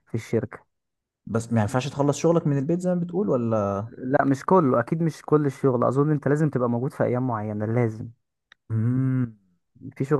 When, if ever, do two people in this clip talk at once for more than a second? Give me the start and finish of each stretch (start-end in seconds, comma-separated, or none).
none